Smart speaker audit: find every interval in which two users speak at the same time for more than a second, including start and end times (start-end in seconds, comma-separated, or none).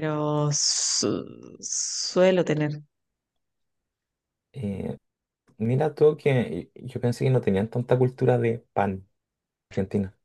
none